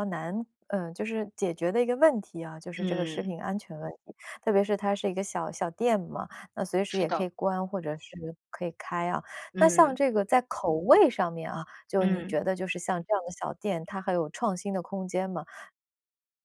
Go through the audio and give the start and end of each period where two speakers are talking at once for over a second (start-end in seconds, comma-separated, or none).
none